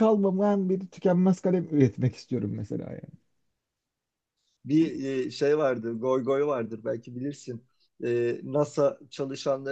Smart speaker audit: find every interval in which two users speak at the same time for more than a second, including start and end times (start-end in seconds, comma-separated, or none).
none